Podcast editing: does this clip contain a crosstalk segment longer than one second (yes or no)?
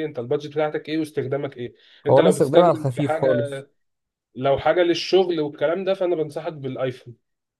yes